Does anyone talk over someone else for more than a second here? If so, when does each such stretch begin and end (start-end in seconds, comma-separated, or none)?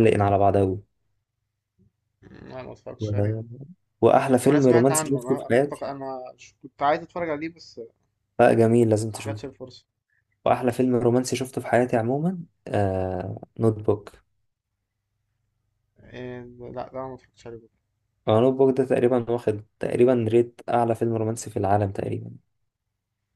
4.5-5.8